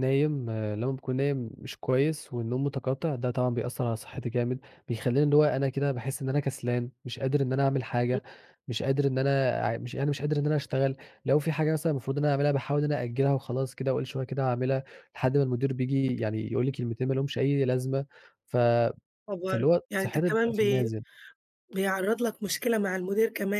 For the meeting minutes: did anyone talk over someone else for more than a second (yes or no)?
yes